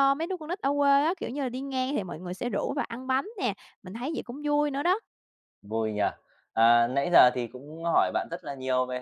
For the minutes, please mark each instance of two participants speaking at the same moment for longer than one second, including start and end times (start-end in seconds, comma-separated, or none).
none